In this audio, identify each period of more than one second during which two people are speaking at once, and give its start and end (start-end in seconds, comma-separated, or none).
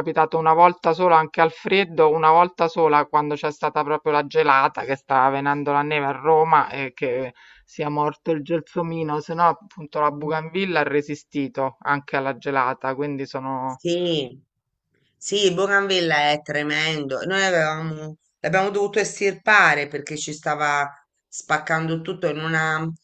none